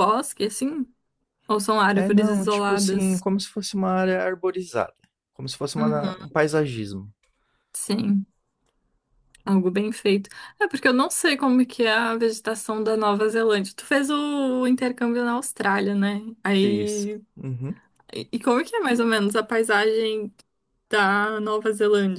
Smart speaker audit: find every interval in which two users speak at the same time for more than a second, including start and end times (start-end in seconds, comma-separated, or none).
1.9-3.2